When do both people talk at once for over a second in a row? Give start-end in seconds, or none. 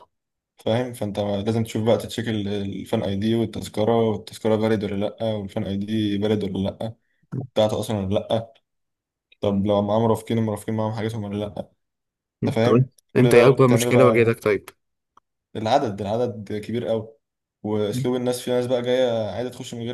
12.5-14.4